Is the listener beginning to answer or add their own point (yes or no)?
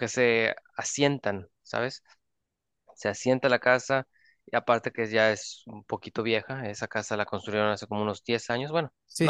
yes